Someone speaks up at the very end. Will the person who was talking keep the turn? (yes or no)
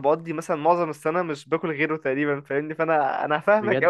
no